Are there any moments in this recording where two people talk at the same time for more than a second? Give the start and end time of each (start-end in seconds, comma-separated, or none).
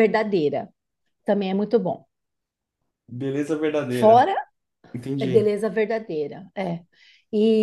none